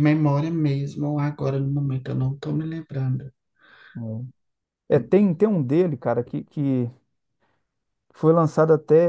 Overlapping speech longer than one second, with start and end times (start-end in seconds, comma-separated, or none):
none